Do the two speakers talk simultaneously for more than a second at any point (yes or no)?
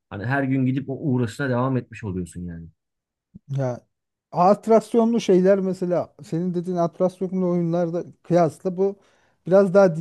no